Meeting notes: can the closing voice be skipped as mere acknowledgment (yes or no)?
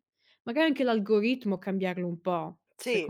no